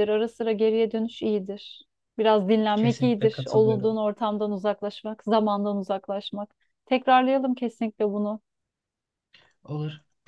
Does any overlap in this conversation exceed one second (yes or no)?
yes